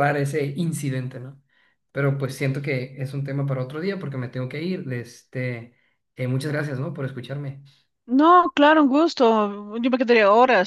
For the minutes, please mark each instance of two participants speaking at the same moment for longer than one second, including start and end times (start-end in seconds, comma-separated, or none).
none